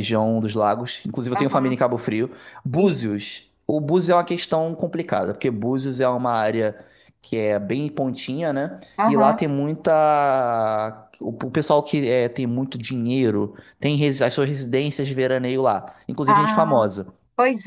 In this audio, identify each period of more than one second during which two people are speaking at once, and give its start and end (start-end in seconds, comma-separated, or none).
none